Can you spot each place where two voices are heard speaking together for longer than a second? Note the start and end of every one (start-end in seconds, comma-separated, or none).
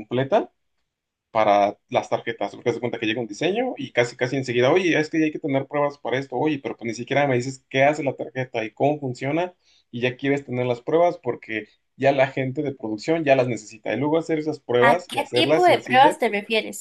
14.8-16.2